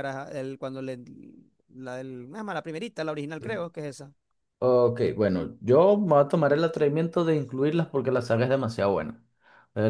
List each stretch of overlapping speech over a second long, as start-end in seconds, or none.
none